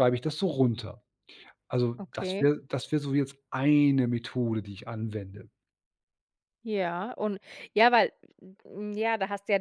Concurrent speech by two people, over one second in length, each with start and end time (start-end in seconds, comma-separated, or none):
none